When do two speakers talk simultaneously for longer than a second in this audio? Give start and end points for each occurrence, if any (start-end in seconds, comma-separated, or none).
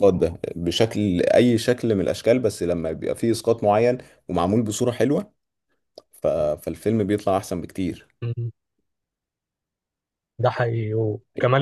none